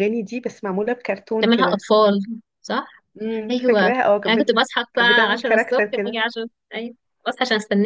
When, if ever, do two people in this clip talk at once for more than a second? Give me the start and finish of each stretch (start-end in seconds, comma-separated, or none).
3.5-6.2